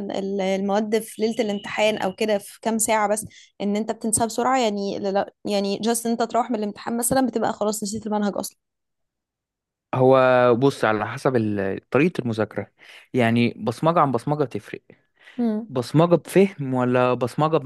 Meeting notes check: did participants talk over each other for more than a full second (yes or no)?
no